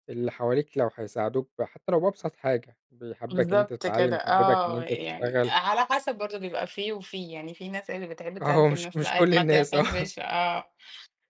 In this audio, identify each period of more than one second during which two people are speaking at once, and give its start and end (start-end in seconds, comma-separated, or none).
3.3-5.5, 8.4-10.1